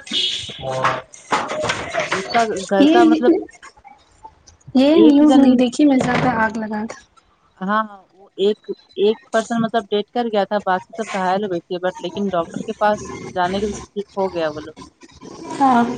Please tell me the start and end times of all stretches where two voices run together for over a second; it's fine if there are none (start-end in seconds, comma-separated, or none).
none